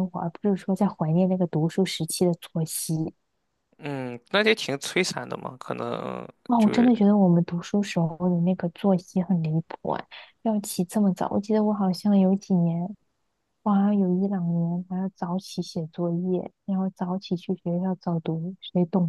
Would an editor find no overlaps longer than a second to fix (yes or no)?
yes